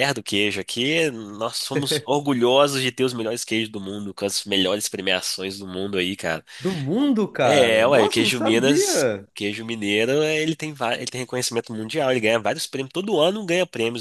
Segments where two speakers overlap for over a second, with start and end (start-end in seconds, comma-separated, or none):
7.5-9.3